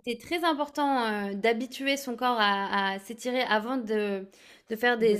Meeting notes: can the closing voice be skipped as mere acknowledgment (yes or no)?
yes